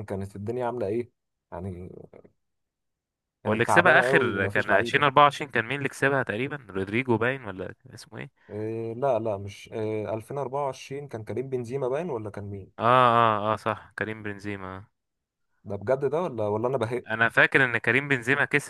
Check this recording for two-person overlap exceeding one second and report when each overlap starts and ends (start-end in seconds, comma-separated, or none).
3.5-5.1